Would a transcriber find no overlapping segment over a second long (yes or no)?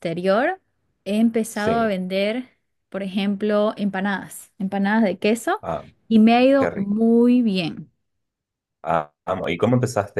yes